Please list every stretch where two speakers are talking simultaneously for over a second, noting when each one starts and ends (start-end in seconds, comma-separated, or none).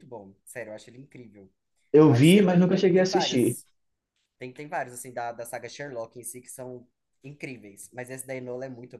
2.0-3.6